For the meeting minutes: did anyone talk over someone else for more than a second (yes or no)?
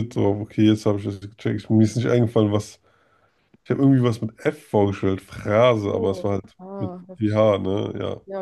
yes